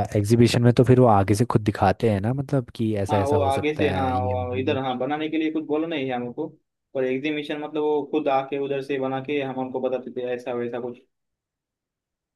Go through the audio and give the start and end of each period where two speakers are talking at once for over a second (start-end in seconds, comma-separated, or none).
3.1-4.8